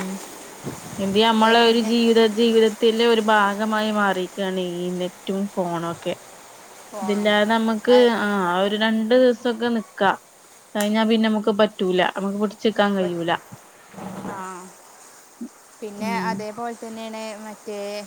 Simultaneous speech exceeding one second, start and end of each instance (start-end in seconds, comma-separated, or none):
none